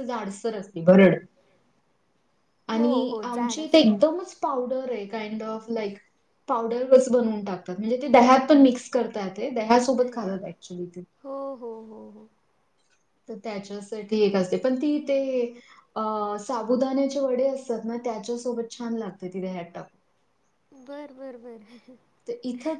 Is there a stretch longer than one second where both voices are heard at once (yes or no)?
yes